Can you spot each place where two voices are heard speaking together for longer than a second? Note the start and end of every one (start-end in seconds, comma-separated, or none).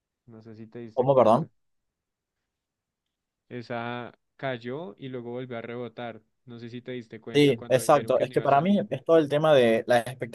7.3-8.8